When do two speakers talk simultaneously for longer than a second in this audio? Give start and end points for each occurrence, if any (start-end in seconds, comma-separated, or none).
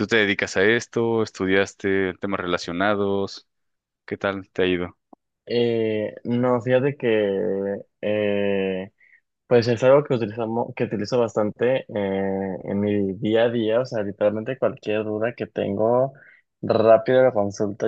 none